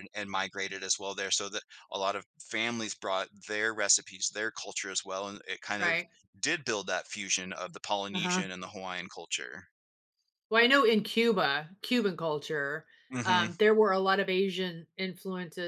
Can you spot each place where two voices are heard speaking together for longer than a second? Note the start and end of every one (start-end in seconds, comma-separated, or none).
none